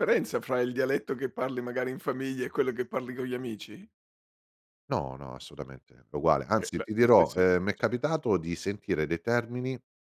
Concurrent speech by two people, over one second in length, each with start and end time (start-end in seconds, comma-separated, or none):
6.6-8.0